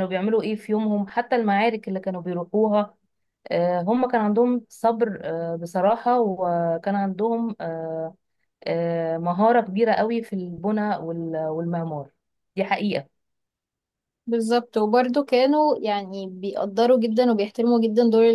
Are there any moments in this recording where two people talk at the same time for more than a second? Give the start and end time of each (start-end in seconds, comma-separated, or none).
none